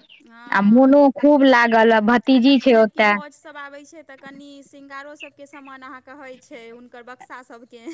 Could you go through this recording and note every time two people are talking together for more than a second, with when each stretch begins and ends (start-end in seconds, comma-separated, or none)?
none